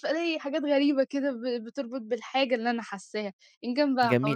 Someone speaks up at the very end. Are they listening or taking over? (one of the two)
taking over